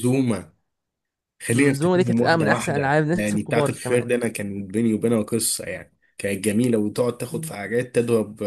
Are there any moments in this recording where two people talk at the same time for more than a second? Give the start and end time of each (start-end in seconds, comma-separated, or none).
1.5-4.0